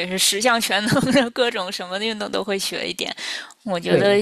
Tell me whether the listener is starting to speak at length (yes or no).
no